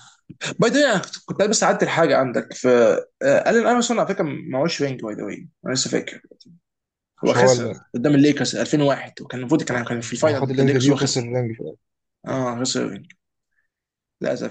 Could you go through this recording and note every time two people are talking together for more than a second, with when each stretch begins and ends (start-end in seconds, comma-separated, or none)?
9.7-11.3